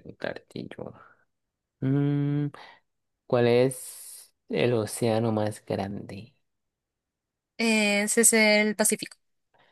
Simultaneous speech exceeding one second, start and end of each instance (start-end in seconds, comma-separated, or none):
none